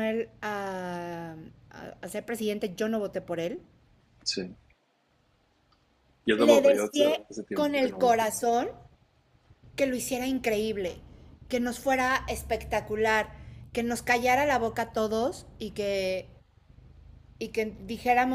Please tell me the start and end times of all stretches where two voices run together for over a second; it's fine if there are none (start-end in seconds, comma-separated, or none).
6.4-8.2